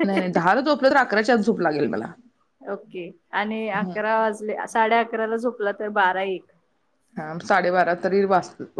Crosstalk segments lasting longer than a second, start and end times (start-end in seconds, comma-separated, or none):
none